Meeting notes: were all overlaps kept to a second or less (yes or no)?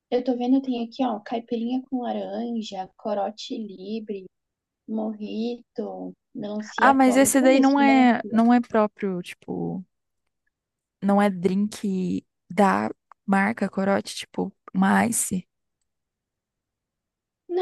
no